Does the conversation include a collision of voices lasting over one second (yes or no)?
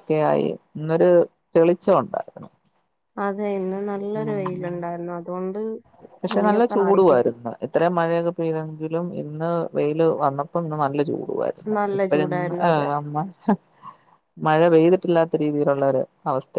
no